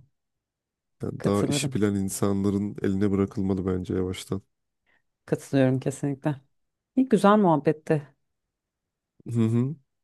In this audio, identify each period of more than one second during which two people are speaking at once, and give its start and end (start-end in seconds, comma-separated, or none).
none